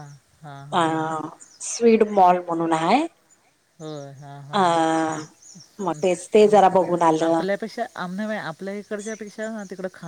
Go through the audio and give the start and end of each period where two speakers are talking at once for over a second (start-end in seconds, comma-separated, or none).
none